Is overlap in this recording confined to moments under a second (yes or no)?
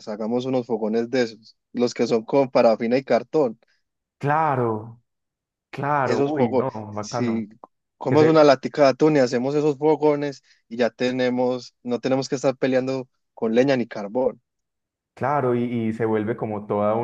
no